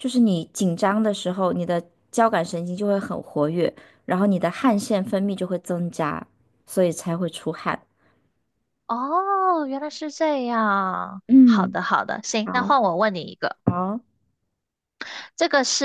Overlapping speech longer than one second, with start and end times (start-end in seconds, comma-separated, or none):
none